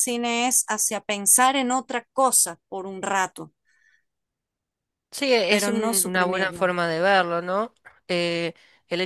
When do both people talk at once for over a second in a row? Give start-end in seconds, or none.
5.5-6.7